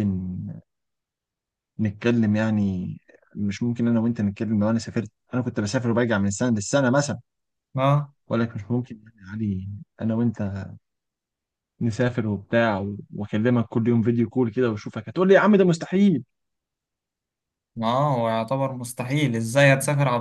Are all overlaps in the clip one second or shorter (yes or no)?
yes